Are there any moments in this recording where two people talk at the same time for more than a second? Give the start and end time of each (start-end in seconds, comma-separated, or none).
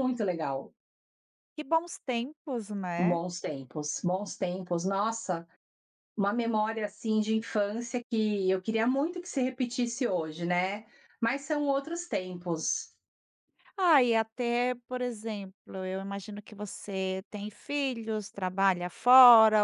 none